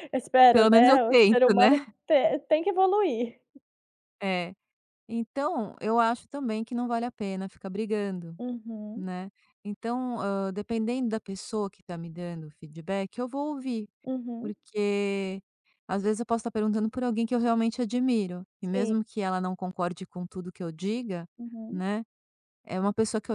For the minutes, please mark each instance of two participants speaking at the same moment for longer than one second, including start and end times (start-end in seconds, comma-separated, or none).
0.5-1.9